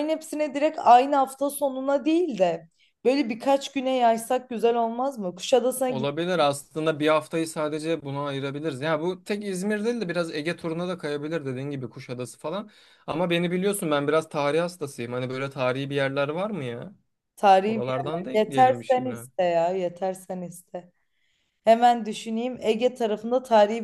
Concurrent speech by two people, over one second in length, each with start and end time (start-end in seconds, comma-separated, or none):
17.6-19.2